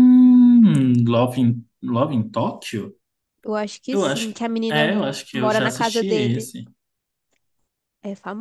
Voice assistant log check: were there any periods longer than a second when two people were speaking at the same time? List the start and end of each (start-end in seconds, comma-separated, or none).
3.9-6.5